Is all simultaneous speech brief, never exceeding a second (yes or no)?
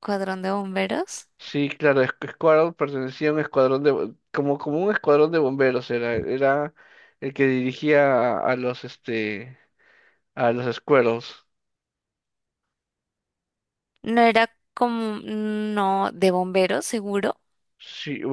yes